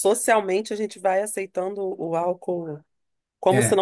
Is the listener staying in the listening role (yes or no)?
yes